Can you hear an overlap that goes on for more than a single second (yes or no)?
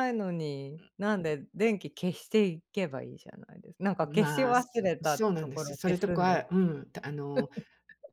yes